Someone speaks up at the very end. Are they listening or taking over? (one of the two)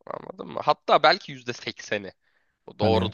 listening